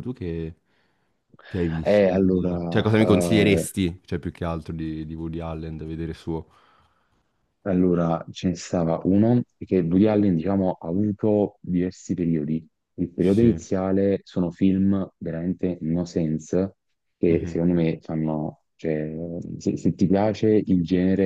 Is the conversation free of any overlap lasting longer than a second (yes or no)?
no